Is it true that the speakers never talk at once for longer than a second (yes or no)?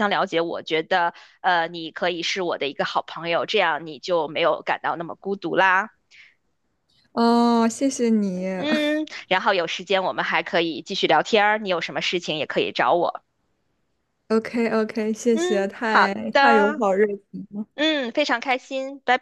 no